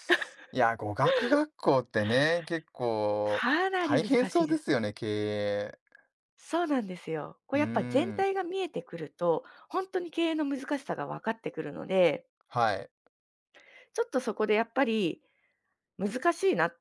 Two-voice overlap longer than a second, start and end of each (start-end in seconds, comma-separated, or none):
3.2-4.6